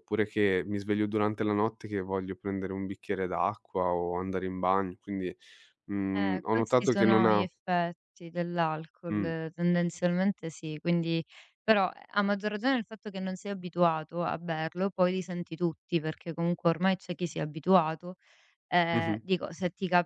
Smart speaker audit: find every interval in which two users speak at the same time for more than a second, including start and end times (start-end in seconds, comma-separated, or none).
6.1-7.5